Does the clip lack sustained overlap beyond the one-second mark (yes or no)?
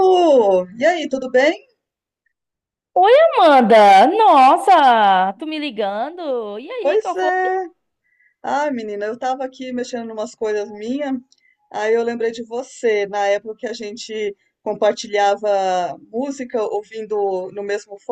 yes